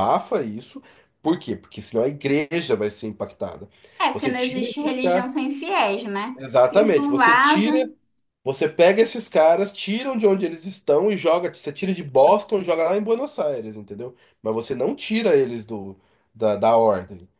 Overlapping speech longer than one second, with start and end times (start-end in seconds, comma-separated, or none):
4.1-5.3, 6.4-7.7